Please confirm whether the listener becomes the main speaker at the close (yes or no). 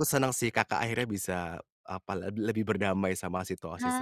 yes